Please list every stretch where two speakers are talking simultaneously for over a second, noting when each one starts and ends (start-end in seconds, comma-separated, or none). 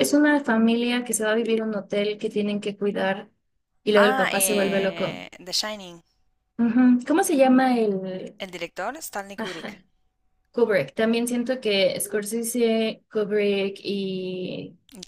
4.0-5.2